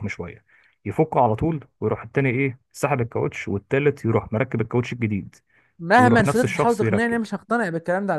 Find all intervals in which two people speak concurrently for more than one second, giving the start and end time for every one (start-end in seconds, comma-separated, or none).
6.0-7.2